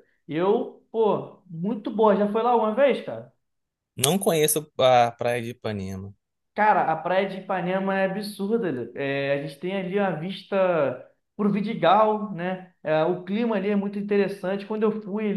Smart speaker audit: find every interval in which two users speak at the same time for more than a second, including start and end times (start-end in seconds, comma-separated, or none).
none